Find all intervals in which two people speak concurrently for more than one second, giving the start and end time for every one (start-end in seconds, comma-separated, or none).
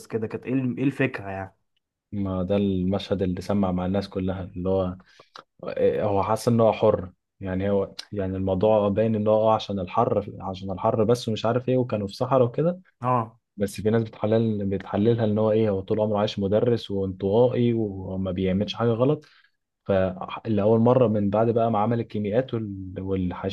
none